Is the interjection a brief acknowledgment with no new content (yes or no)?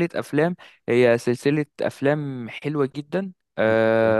yes